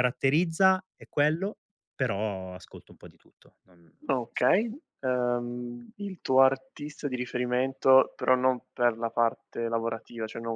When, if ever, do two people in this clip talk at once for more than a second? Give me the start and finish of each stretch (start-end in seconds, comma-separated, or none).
none